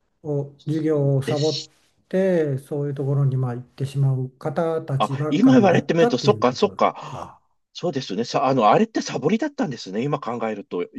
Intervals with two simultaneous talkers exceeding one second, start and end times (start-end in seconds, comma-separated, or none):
5.0-7.4